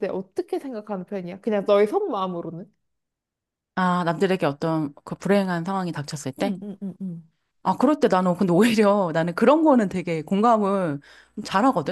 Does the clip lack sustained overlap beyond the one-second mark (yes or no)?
yes